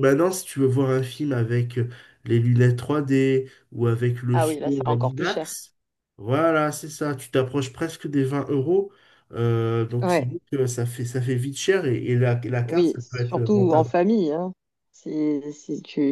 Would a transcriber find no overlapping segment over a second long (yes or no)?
no